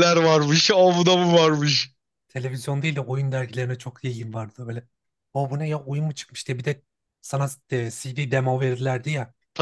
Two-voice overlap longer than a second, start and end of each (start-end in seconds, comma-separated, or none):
none